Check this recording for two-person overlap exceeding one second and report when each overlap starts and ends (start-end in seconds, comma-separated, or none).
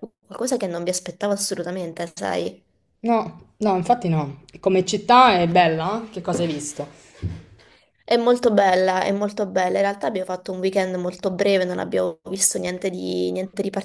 none